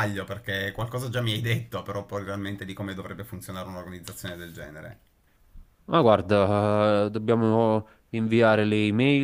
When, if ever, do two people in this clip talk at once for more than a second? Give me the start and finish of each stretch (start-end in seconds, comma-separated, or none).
none